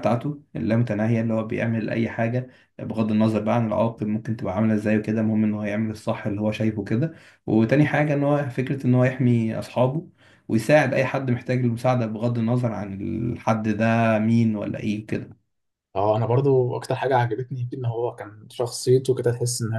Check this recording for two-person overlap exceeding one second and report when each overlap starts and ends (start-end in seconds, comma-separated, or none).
none